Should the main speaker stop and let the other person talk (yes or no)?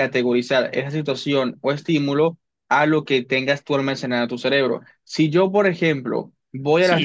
yes